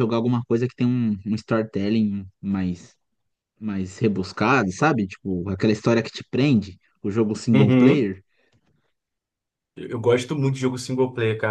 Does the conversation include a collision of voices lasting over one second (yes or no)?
no